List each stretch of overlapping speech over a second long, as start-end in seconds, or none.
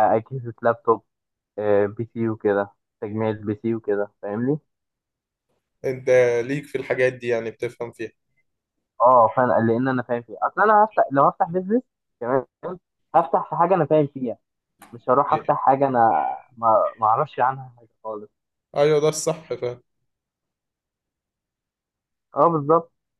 none